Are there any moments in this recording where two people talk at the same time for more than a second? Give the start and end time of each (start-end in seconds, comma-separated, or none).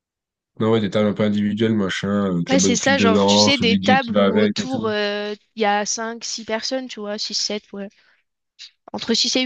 2.5-4.9